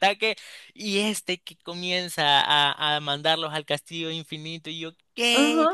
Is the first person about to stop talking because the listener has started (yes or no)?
yes